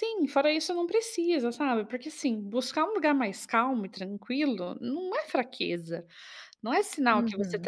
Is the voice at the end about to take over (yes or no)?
no